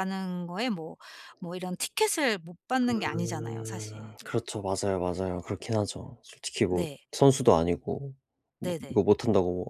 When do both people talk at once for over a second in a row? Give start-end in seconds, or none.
2.9-4.1